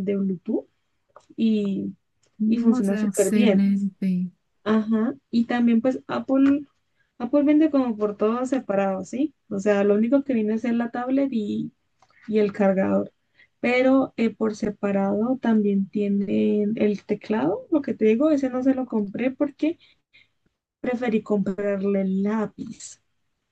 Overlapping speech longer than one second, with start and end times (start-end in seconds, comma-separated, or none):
2.5-3.7